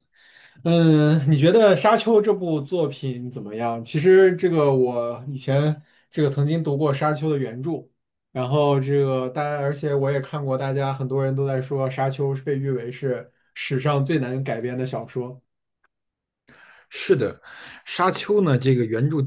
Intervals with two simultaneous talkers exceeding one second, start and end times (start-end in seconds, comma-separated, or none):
none